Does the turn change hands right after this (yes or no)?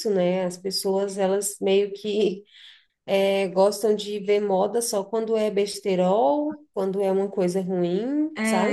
no